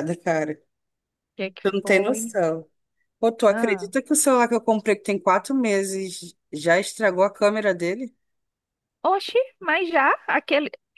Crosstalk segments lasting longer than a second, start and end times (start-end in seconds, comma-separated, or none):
none